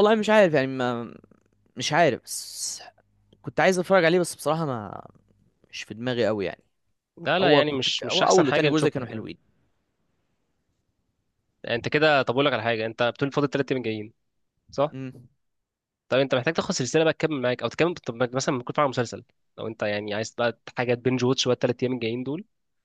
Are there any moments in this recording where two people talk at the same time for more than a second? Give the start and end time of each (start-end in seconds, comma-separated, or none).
7.4-9.3